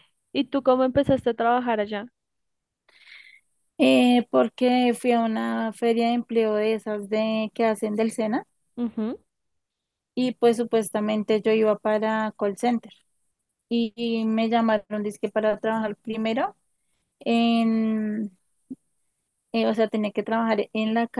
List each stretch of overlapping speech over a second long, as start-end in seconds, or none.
none